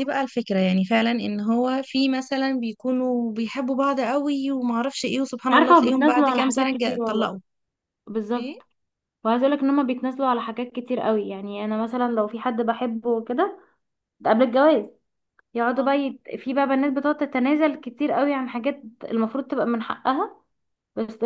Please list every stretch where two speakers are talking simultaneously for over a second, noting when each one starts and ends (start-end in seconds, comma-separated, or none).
5.5-7.4